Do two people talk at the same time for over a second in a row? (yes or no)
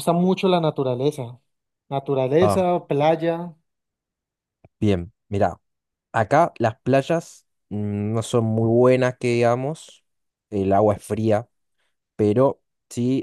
no